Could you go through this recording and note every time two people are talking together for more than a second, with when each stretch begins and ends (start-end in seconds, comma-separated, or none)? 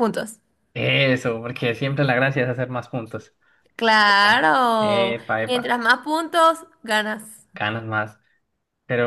4.1-5.7